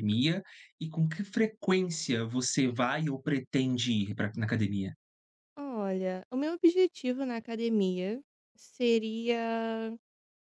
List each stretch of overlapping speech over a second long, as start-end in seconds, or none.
none